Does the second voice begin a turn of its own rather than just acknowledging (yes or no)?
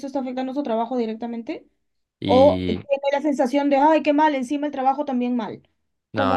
yes